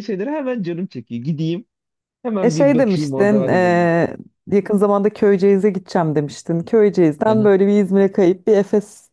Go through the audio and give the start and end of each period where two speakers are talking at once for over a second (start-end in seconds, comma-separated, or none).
2.4-3.9